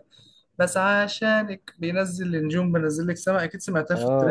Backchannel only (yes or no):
no